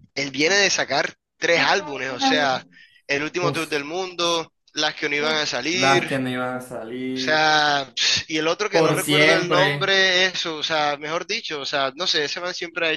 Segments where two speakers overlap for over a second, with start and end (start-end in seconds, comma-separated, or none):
8.7-10.0